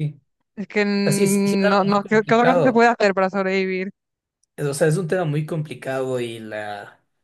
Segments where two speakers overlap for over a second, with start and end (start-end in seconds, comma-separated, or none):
1.0-2.9